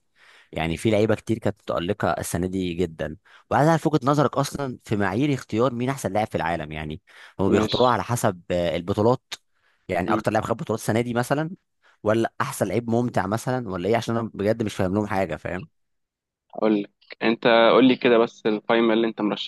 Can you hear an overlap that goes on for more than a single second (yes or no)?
no